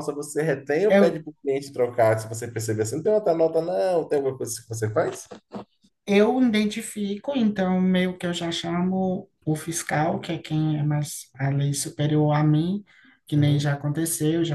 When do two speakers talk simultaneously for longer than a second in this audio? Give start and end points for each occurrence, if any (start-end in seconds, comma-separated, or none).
none